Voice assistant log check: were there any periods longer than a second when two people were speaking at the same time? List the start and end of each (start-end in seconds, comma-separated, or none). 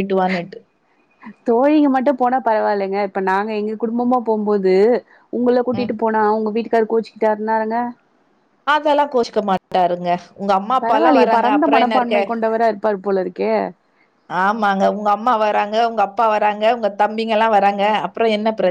10.8-12.2